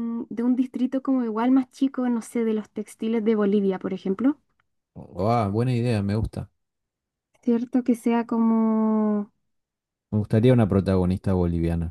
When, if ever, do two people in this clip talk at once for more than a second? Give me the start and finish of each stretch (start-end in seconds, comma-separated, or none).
none